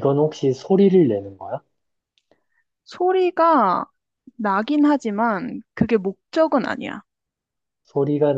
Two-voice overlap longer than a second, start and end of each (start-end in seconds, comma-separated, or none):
none